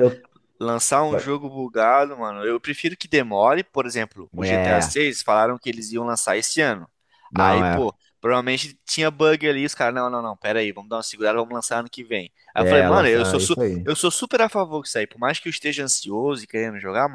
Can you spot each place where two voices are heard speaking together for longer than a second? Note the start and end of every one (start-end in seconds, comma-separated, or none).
12.6-13.9